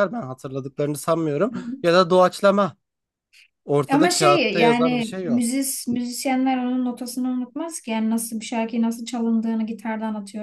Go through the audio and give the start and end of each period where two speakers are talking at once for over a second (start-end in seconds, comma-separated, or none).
3.9-5.5